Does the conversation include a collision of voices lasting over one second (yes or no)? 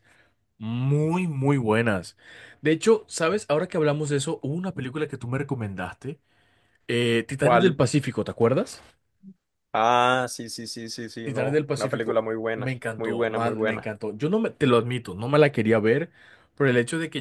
yes